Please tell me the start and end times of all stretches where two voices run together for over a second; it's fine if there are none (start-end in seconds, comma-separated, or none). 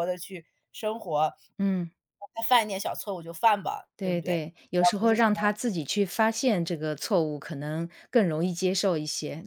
4.0-5.5